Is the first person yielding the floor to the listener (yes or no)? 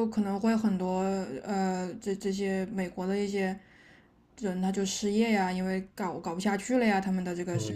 yes